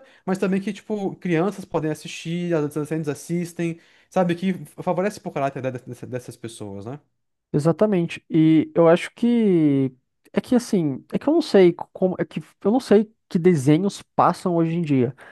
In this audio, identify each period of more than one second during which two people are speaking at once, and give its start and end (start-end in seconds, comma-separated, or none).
none